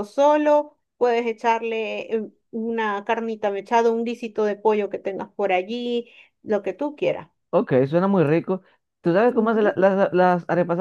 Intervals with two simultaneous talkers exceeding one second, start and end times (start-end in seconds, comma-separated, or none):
none